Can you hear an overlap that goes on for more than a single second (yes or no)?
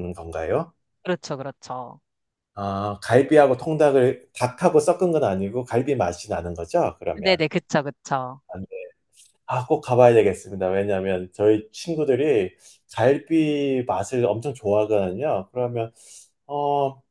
no